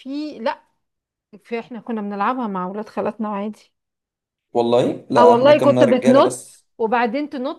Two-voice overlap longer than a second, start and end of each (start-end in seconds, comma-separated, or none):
5.2-6.4